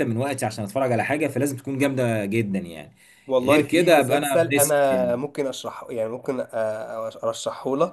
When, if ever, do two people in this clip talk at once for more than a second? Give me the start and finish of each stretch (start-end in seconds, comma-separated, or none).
3.4-5.2